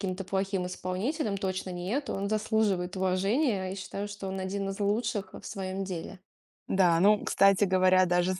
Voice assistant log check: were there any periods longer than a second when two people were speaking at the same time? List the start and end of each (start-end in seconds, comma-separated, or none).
none